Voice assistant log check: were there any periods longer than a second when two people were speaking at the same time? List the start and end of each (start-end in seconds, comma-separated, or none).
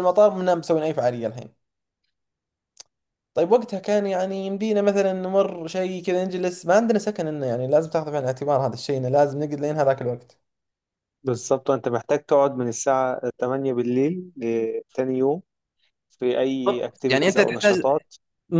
16.7-17.9